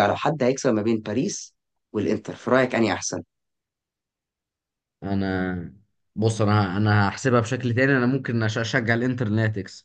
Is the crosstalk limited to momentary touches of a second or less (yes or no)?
yes